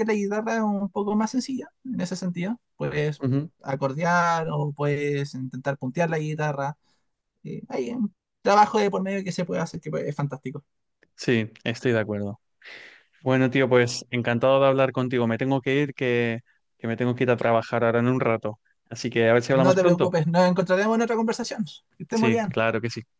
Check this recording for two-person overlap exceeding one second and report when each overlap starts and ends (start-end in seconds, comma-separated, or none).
none